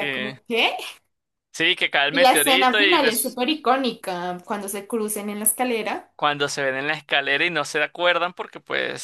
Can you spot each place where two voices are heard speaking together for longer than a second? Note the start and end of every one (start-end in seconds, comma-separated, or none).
2.1-3.4